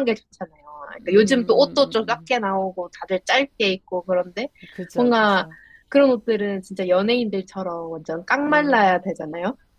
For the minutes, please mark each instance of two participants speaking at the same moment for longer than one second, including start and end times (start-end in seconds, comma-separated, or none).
1.0-2.3